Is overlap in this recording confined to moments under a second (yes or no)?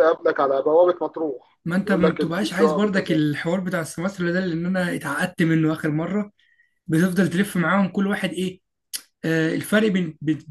no